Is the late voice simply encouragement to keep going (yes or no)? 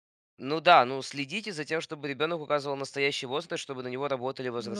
no